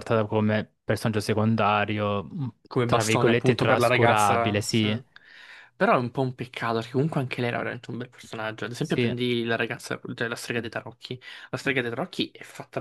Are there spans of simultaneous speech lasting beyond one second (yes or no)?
yes